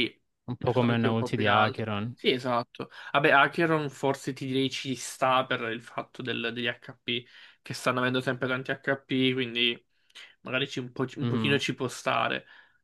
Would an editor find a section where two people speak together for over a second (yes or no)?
yes